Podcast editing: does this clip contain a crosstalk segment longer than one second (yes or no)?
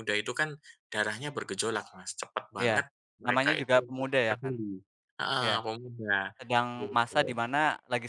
yes